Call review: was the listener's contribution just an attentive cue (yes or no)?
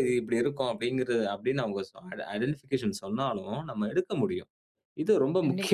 yes